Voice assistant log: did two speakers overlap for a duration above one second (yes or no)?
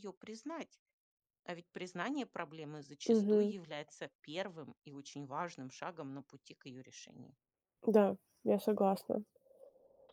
no